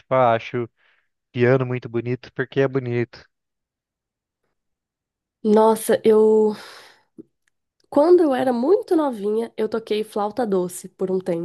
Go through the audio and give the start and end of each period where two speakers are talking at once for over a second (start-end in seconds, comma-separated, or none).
none